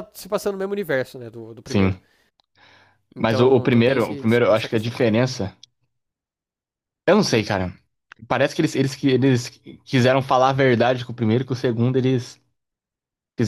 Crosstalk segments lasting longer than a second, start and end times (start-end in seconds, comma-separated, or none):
3.2-5.0